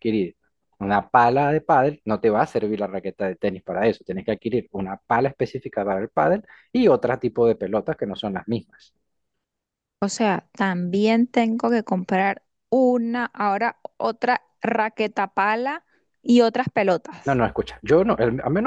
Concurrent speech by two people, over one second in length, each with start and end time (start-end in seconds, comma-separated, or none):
none